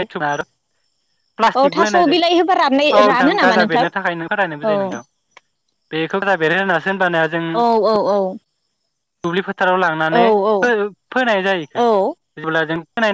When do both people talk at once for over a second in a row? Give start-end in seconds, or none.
1.6-3.8